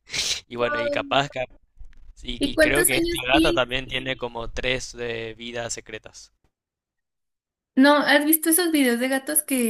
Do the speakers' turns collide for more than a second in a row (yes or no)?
yes